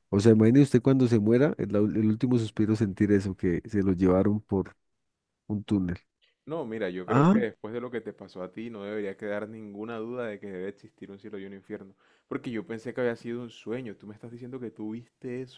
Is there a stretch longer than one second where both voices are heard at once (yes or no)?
no